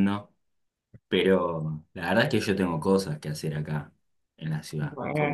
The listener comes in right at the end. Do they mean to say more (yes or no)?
no